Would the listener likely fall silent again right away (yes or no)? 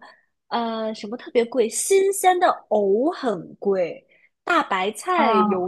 yes